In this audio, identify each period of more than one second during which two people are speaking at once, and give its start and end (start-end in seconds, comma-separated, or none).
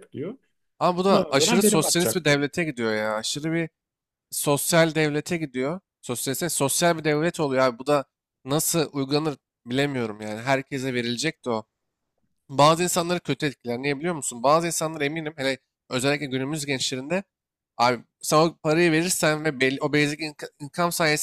1.1-2.4